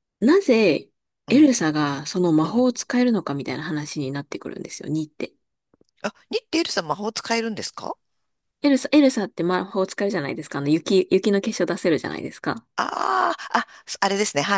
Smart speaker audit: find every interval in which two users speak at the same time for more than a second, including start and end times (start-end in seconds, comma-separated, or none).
none